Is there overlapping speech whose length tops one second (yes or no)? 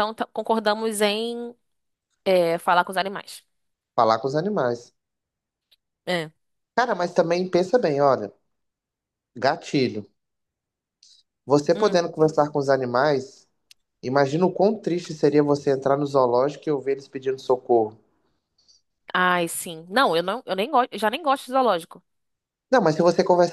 no